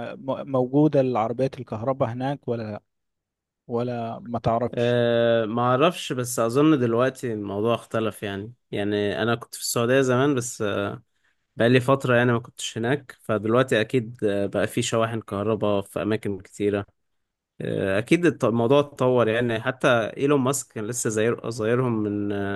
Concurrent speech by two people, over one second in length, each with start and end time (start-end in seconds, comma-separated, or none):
none